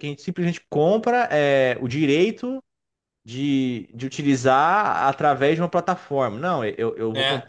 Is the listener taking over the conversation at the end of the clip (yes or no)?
yes